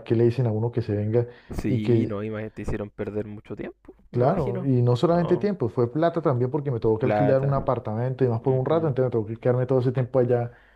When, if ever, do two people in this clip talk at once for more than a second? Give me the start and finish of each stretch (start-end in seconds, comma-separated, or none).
4.1-5.5